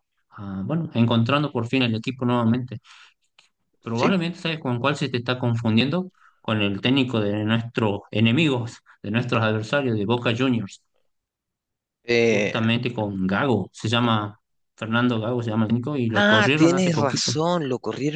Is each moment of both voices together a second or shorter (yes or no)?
no